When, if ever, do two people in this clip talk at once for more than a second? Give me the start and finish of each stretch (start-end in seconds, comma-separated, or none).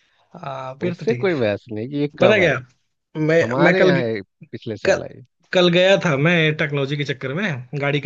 none